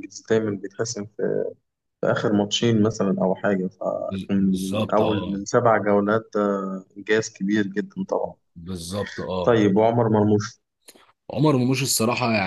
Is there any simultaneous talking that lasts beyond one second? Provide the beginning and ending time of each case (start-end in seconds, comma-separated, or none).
4.1-5.4